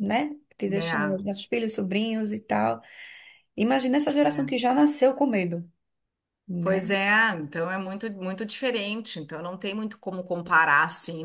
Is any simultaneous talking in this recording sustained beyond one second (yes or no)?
no